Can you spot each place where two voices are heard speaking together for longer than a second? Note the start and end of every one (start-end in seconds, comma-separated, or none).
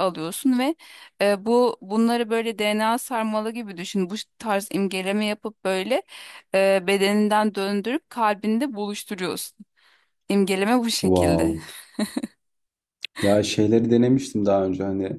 none